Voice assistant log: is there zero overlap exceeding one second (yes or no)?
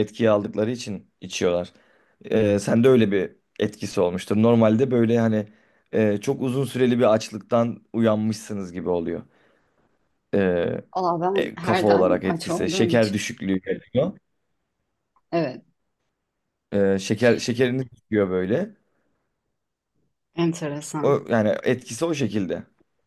no